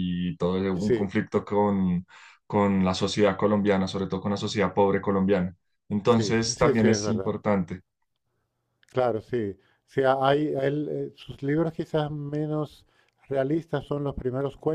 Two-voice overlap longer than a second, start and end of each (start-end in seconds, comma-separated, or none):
6.0-7.3